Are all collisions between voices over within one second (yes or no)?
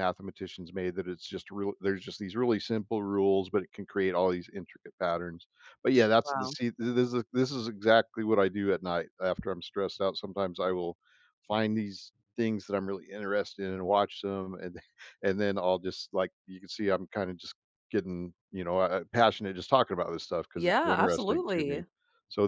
no